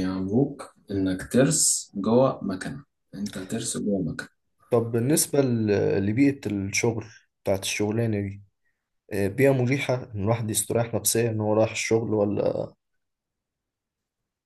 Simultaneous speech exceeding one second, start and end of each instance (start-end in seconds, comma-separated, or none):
none